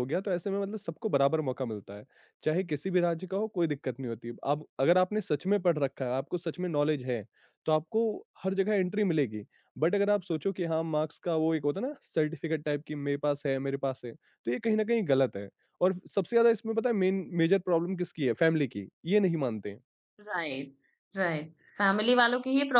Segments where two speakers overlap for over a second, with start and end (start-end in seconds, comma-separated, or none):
none